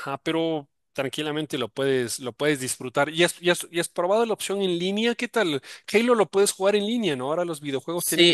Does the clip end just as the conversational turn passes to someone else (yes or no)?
yes